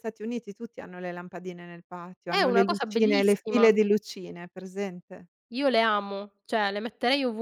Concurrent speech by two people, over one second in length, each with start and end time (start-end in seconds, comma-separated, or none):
2.3-3.7